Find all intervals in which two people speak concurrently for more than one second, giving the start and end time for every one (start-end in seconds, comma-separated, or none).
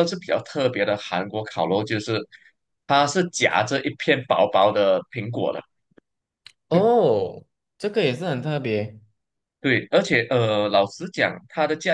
none